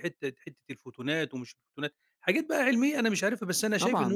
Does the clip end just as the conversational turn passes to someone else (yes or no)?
yes